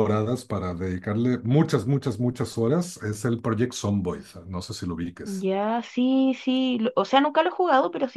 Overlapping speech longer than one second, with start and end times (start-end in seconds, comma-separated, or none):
none